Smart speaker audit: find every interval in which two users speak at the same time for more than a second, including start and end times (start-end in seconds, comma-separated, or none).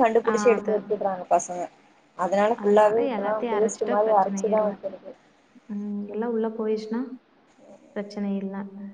2.6-4.7